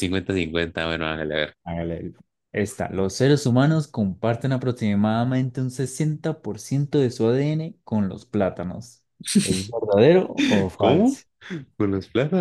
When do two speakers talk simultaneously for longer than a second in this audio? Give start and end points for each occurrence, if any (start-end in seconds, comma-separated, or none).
none